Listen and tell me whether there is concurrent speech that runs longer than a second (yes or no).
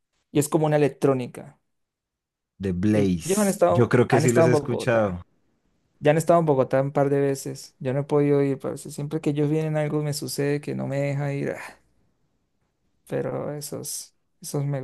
yes